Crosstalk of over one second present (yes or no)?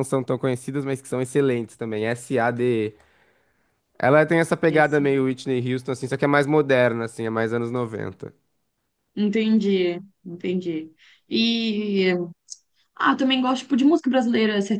no